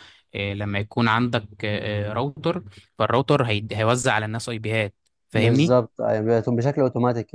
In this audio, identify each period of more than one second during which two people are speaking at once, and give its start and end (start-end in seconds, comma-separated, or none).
none